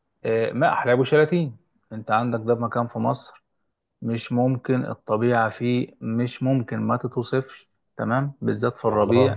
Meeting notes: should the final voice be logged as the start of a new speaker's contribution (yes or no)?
no